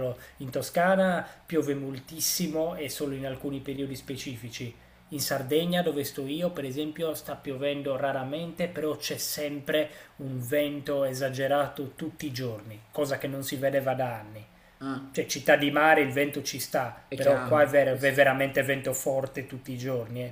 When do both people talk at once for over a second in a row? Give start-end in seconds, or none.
17.1-18.4